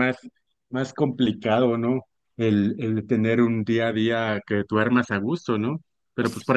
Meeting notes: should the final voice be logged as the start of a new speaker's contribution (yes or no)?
no